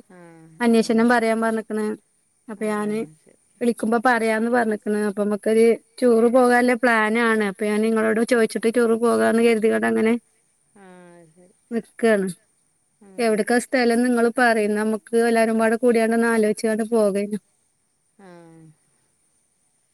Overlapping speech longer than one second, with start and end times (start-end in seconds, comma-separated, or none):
none